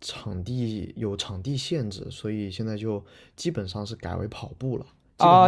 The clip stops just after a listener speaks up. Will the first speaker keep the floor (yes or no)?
no